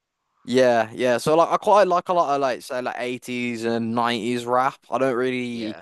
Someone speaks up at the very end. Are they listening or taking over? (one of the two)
listening